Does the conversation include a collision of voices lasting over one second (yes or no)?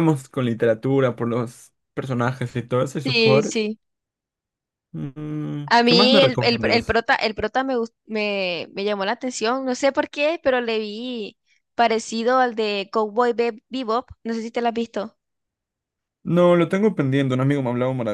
yes